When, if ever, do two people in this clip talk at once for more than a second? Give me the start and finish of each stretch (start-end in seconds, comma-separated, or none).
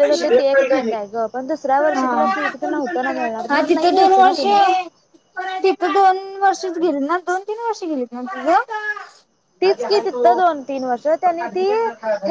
none